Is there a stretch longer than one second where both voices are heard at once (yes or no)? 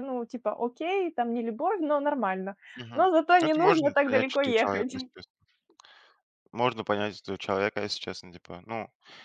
yes